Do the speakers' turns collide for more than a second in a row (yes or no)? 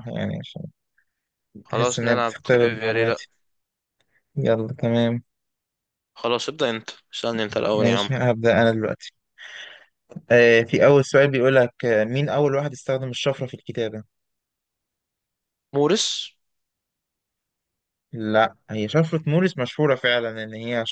yes